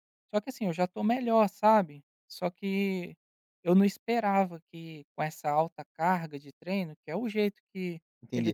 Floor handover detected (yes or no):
yes